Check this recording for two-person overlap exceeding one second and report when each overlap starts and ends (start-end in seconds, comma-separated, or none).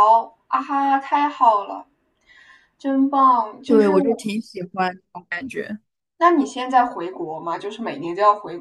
none